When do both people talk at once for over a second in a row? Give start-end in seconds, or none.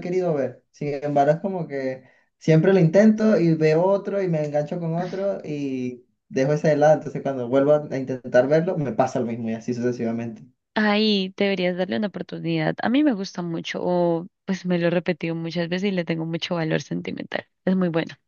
none